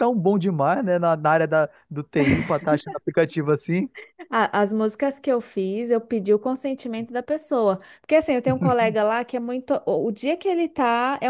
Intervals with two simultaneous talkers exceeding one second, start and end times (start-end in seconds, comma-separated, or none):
none